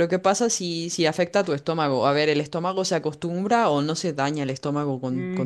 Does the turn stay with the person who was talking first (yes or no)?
no